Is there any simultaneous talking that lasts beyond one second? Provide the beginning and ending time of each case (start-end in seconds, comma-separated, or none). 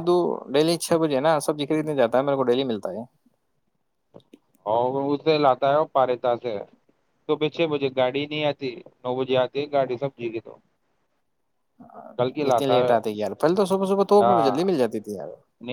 none